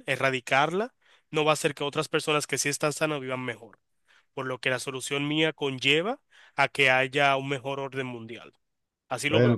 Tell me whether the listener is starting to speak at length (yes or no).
yes